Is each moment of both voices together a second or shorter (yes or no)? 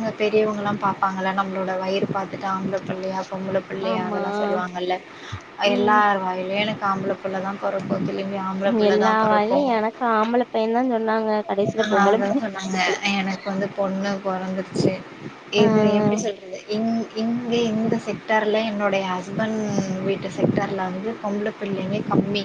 yes